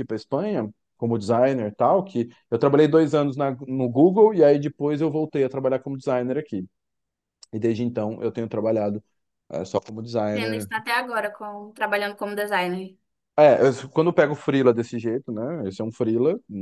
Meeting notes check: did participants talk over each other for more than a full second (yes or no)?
no